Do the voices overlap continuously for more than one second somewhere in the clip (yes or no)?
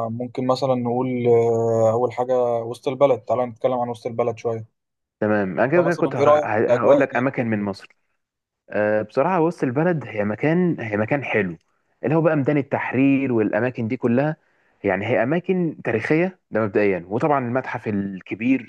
yes